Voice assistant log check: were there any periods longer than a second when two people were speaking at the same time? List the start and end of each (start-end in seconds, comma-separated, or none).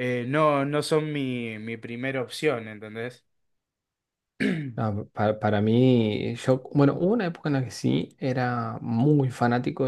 none